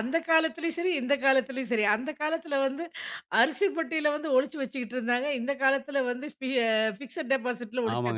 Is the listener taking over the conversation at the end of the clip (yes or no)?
yes